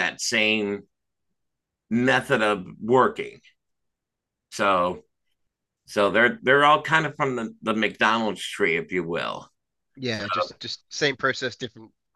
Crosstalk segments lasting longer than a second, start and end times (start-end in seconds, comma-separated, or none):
none